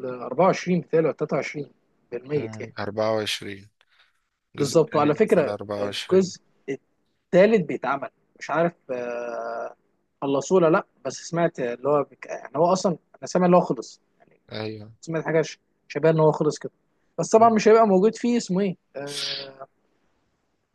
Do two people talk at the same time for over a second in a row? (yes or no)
yes